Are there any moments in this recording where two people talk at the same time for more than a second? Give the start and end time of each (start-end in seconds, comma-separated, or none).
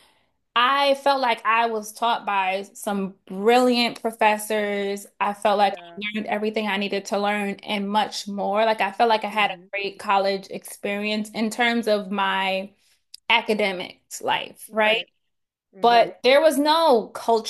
none